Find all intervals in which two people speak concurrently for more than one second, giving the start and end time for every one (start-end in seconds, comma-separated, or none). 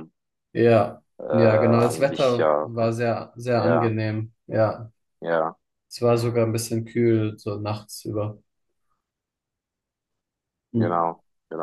1.2-2.7